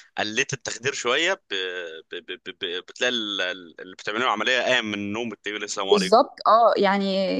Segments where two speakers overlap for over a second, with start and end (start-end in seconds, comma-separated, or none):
none